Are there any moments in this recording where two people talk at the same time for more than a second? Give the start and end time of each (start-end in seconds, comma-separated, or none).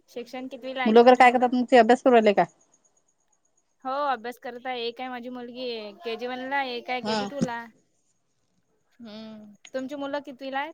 none